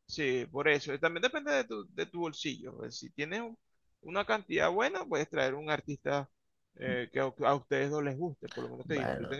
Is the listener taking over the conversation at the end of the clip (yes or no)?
yes